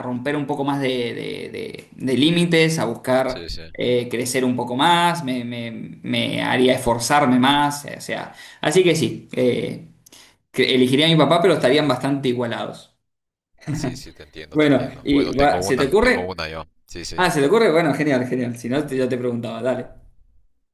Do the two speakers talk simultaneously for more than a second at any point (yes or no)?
yes